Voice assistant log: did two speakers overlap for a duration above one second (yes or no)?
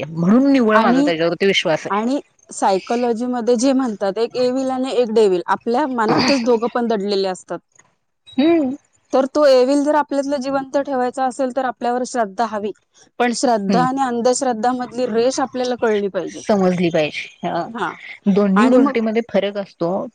no